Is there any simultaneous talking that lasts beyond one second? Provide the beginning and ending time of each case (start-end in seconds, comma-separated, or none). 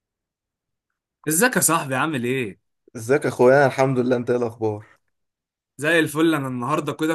none